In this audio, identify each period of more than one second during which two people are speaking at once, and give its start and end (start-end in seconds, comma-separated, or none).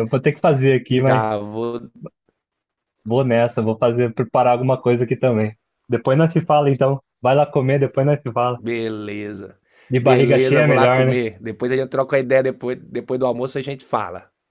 10.0-11.2